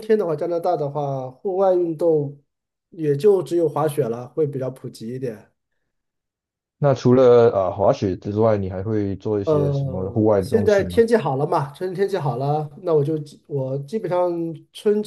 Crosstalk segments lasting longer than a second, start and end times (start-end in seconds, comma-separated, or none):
9.4-11.0